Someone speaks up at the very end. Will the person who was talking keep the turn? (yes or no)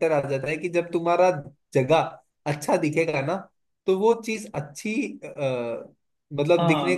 no